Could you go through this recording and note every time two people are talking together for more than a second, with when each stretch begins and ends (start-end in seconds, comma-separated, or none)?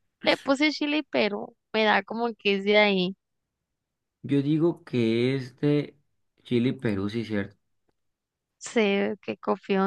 none